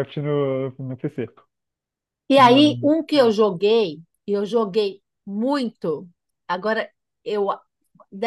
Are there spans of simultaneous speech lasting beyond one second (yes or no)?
no